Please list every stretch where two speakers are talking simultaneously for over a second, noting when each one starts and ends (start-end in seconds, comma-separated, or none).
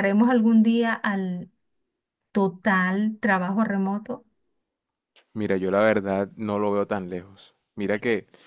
none